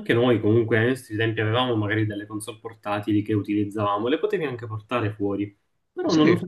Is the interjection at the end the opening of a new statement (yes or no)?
no